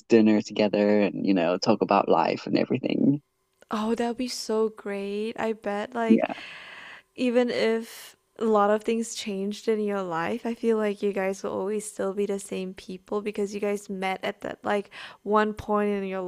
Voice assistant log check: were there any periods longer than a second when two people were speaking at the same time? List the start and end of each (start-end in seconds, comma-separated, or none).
none